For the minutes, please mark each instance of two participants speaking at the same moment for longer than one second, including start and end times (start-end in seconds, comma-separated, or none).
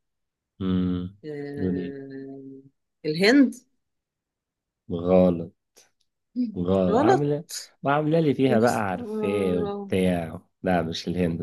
8.5-9.9